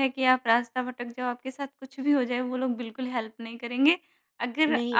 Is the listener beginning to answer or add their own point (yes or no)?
no